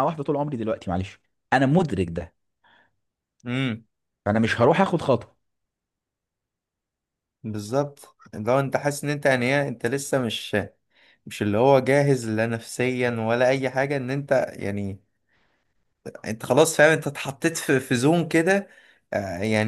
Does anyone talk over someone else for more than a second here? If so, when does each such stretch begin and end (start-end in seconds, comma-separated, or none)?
none